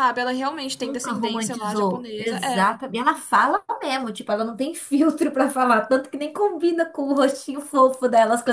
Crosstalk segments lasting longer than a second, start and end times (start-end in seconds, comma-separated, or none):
0.8-2.7